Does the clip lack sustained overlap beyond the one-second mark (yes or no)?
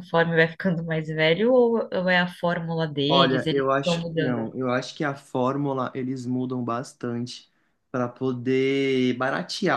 no